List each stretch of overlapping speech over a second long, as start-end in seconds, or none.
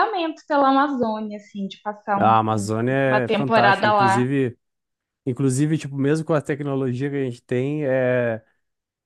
2.1-4.2